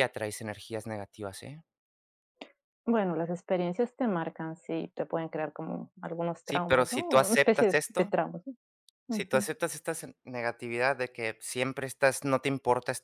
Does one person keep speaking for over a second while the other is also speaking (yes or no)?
yes